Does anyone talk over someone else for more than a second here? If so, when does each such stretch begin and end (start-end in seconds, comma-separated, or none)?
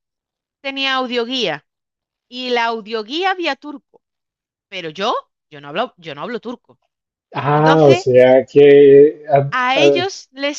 none